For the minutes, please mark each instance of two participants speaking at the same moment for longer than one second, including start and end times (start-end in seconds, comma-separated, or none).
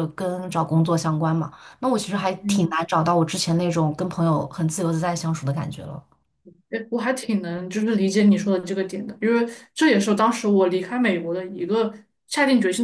none